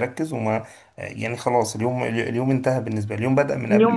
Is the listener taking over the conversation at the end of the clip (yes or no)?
no